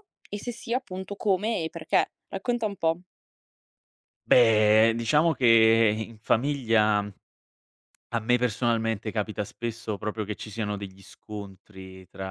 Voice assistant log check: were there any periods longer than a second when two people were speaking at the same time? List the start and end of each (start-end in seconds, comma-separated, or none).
none